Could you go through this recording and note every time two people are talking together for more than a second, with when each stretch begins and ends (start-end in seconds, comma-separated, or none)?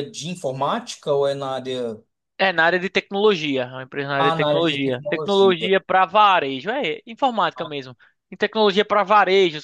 4.2-5.7